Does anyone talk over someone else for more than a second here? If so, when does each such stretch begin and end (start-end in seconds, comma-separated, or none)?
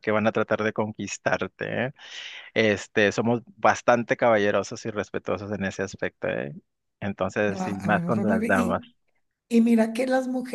7.5-8.8